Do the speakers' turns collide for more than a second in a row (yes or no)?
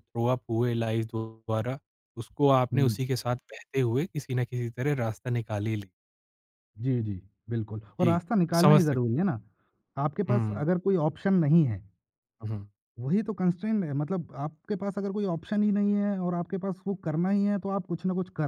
yes